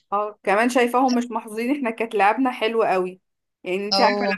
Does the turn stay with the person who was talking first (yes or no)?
yes